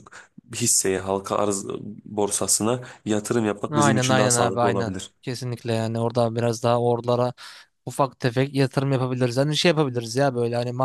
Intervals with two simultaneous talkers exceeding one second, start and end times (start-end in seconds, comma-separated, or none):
3.7-5.1